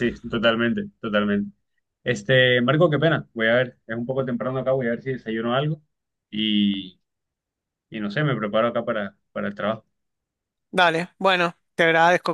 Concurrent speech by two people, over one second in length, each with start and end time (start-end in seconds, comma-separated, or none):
none